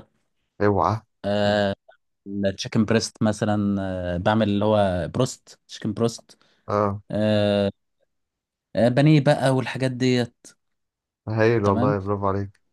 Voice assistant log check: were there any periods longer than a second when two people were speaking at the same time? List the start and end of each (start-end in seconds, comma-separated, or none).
none